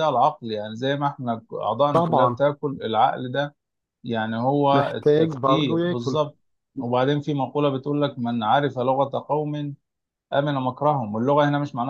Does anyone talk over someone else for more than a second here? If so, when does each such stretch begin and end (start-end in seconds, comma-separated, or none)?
4.7-6.2